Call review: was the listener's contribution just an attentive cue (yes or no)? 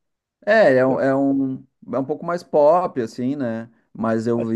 yes